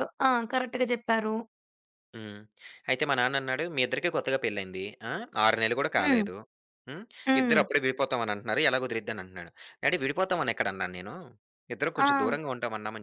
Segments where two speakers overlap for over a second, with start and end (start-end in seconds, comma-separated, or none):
none